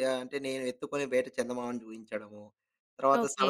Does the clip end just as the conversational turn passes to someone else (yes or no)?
no